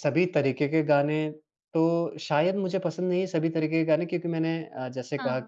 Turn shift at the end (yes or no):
no